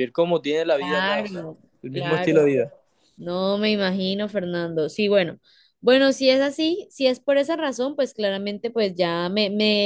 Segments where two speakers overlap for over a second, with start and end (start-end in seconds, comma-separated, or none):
0.8-2.6